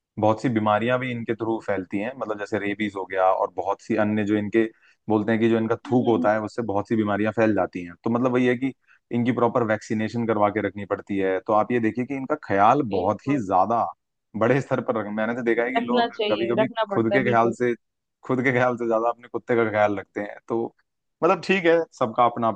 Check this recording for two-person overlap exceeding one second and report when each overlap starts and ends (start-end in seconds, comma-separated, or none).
15.8-17.6